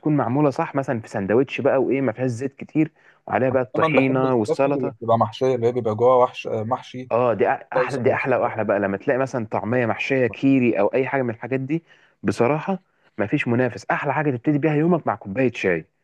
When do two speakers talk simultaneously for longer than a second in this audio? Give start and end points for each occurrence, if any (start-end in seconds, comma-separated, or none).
3.7-4.9